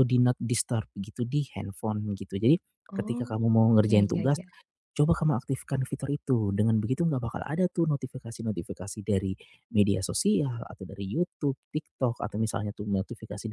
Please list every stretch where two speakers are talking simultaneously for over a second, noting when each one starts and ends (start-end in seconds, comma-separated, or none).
2.9-4.4